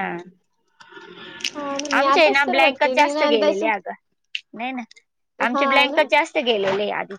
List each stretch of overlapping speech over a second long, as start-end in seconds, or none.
2.0-3.6